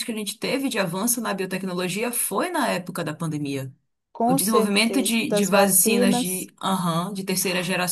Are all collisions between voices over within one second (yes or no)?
no